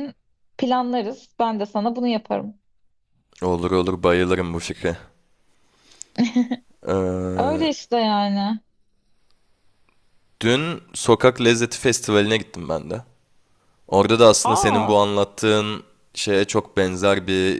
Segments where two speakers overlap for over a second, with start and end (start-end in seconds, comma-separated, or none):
none